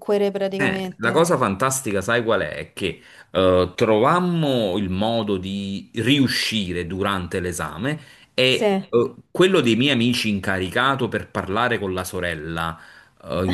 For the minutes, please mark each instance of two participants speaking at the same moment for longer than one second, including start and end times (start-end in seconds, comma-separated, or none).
none